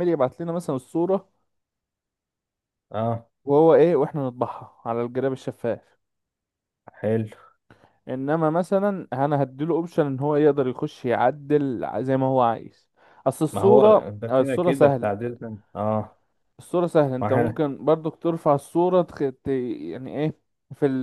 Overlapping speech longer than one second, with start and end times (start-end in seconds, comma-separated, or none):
13.5-15.1